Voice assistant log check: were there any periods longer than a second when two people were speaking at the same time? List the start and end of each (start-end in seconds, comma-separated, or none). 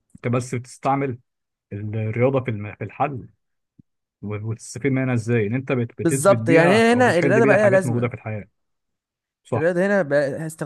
6.0-8.1